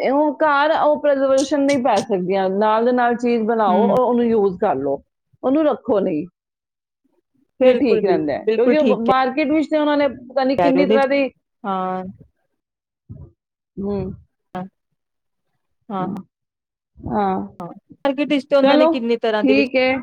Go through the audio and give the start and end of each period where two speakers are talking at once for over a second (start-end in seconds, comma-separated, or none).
7.6-9.0